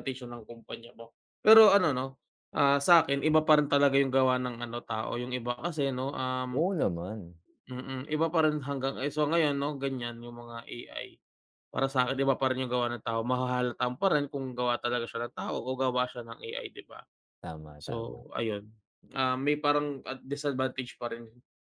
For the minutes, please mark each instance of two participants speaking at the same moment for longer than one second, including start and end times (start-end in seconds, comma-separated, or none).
none